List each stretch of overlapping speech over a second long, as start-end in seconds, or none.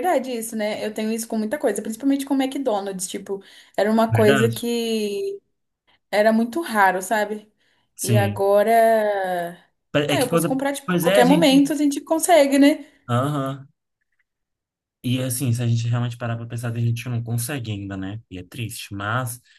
10.1-11.6